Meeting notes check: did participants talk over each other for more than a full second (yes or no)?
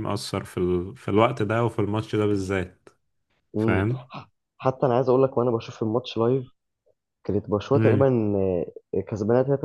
no